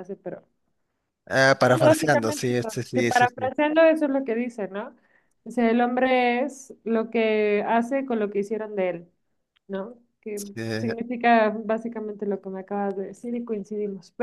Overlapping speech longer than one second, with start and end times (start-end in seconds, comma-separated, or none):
1.6-3.5